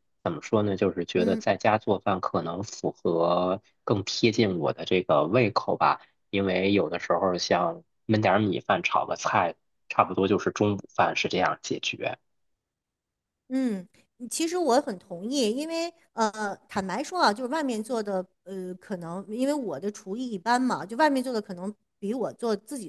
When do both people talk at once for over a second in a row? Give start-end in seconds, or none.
none